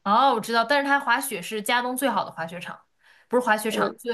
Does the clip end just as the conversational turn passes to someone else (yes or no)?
no